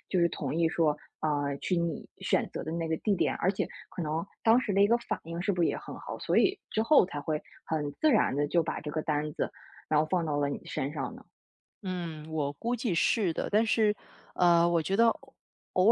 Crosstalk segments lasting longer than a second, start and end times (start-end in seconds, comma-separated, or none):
none